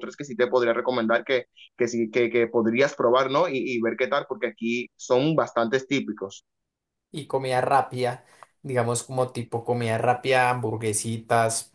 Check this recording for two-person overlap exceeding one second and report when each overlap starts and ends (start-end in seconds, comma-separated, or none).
none